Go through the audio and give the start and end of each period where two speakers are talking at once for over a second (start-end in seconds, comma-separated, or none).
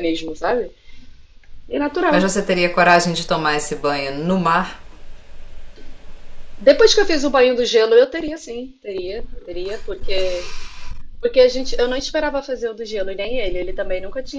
none